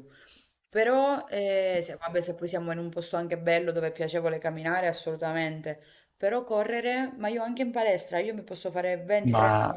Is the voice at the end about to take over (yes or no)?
no